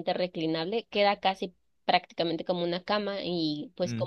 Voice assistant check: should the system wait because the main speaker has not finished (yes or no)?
yes